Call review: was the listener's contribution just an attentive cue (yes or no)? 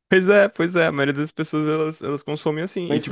no